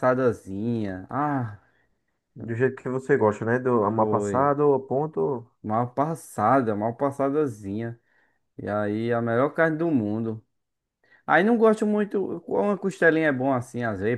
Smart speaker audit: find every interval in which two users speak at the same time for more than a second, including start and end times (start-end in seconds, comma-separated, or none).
none